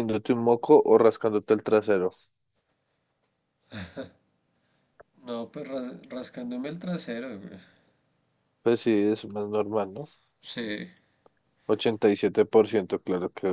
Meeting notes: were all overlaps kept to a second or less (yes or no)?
yes